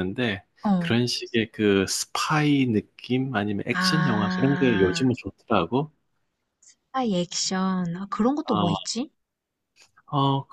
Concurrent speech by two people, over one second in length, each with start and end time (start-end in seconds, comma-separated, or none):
3.7-5.1